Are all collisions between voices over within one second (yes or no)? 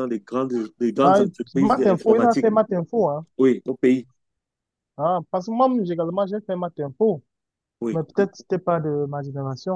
no